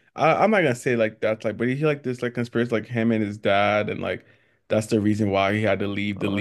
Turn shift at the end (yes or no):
yes